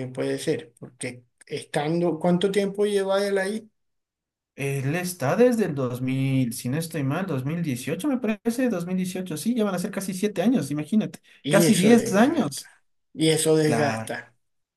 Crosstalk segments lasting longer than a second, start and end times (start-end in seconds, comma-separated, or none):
11.4-12.6